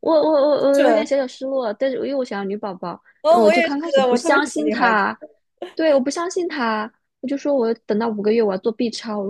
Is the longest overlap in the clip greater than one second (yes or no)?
yes